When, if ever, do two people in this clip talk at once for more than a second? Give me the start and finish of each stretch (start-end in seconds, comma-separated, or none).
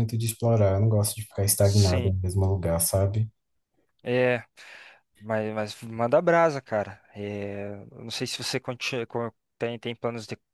none